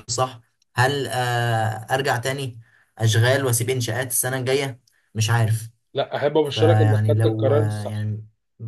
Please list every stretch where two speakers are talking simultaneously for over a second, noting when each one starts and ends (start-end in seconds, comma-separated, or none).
6.4-8.1